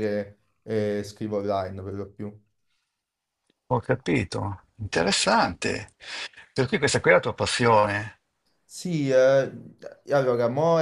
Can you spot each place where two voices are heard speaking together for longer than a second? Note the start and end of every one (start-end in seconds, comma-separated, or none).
none